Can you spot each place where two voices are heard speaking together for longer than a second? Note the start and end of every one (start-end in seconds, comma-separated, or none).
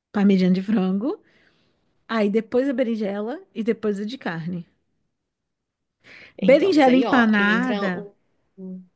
6.4-8.1